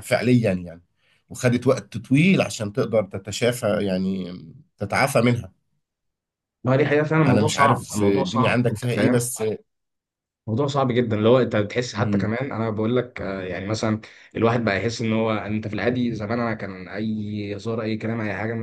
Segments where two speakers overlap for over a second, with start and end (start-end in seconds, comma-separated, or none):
7.2-9.2